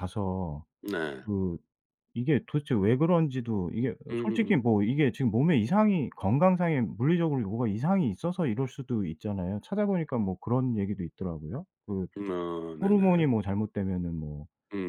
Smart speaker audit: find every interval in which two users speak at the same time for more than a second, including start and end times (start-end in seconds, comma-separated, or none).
none